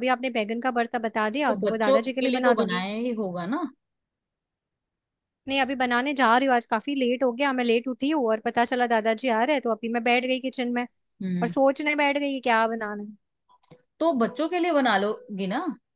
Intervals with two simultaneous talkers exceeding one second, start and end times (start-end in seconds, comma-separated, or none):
1.5-2.9